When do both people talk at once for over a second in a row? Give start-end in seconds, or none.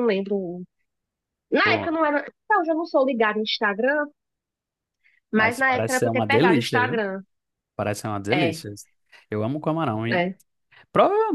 5.3-7.0